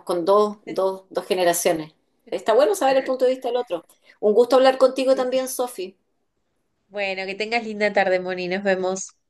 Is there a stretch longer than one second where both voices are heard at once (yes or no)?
no